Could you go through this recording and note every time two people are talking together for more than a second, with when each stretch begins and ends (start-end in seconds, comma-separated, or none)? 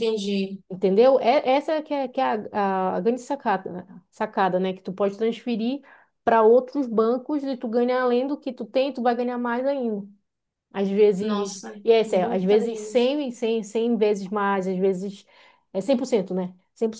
11.2-13.2